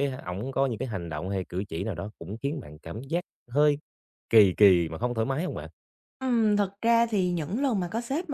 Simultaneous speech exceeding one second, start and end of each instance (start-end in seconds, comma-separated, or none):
none